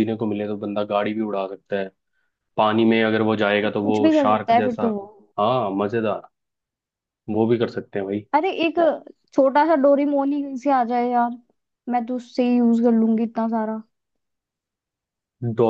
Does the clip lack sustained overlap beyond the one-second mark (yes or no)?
no